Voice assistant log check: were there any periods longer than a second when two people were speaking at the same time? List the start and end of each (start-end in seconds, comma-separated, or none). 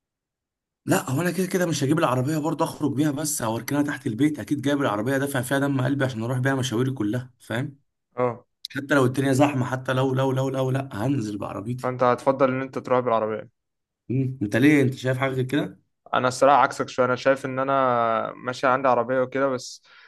none